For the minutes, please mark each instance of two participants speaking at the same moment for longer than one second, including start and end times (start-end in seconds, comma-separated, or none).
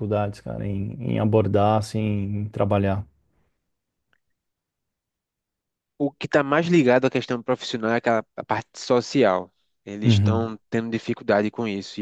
none